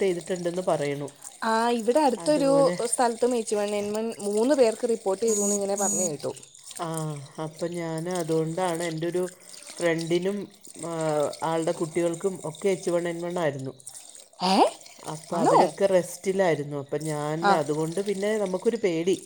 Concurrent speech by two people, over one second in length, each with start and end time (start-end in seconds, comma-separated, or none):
none